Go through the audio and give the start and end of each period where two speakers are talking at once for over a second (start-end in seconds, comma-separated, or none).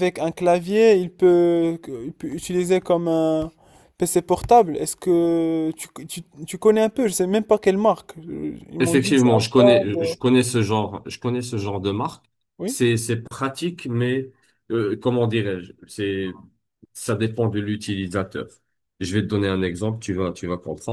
8.8-10.1